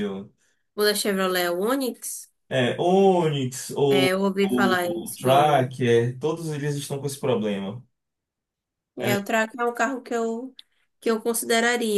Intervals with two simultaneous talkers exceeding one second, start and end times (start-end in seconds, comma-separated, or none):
3.9-5.7